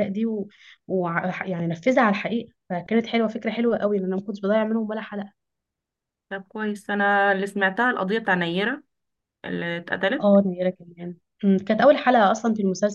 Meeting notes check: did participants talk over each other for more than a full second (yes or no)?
no